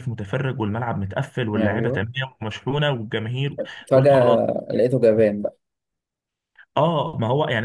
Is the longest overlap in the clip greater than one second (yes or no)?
no